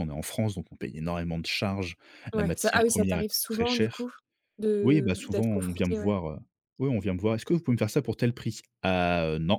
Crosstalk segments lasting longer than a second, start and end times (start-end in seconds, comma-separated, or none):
2.4-4.1, 4.8-6.1